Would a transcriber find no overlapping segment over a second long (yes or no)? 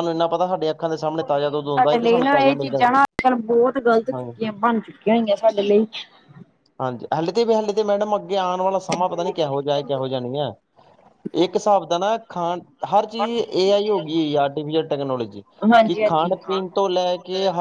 no